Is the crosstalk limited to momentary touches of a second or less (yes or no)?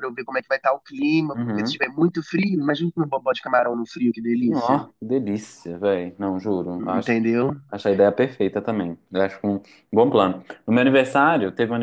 yes